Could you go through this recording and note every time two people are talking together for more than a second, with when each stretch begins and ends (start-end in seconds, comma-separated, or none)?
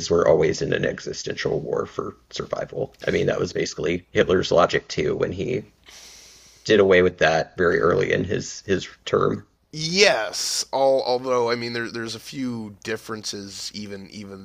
none